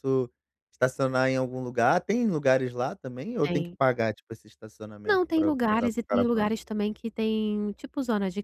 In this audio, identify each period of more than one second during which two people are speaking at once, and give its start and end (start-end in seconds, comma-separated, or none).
5.0-6.5